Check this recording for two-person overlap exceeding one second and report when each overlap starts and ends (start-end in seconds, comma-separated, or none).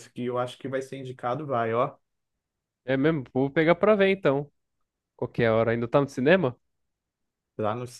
none